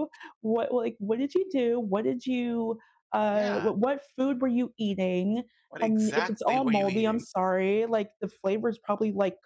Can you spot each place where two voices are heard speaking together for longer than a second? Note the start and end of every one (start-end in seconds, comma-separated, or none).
5.8-7.2